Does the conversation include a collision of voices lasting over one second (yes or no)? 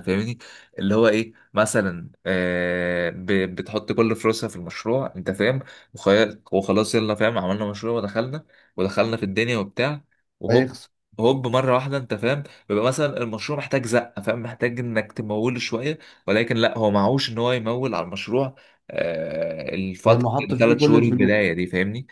yes